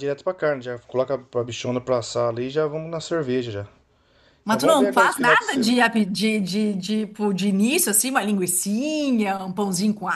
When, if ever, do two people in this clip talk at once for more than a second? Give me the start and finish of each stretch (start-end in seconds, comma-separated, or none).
4.5-5.7